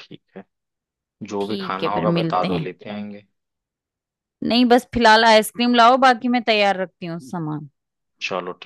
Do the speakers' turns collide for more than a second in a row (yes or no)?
yes